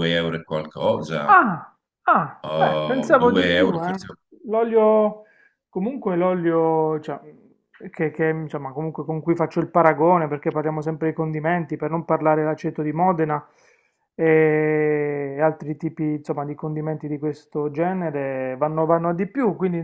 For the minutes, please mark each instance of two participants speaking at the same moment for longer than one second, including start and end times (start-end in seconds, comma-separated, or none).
2.4-4.0